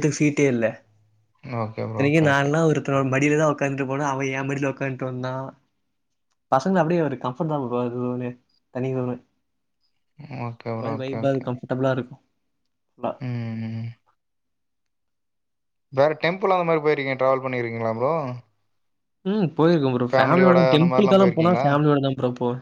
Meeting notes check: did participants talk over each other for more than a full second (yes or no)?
yes